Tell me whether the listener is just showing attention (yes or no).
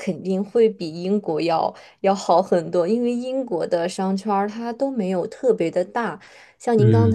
yes